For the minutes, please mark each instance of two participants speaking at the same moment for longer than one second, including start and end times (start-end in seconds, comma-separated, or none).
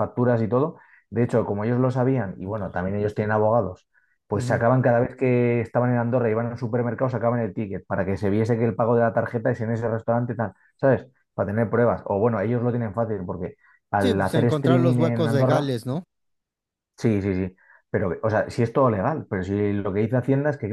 14.0-15.7